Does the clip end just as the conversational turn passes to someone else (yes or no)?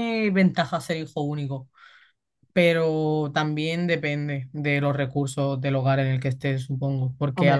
no